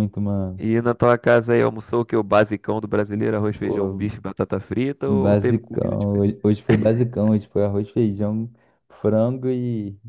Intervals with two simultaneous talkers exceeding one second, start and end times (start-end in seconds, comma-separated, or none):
5.1-6.3